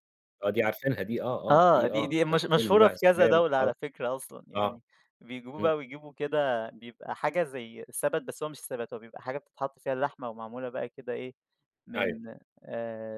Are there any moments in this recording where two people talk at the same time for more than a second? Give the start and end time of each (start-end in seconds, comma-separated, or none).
1.5-3.7